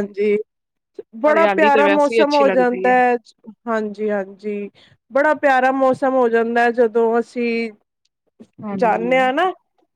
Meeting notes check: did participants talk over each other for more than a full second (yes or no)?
yes